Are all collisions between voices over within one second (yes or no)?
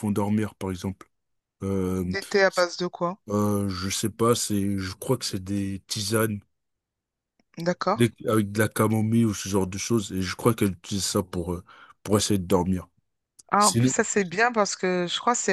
yes